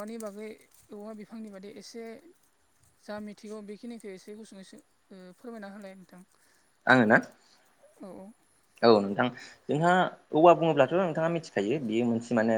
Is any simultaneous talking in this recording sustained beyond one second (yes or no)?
no